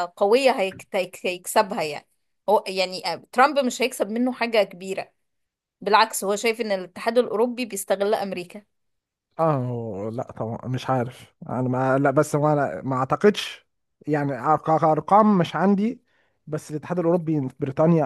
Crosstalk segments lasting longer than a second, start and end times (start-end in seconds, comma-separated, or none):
none